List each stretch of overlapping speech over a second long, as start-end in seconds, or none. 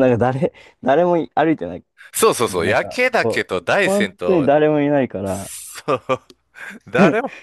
2.5-4.5